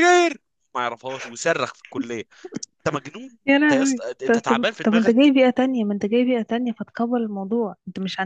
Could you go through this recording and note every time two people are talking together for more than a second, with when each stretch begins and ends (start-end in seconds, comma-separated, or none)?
3.5-5.3